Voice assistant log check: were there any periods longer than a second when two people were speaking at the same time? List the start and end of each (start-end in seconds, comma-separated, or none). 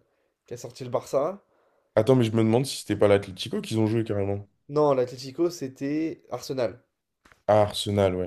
none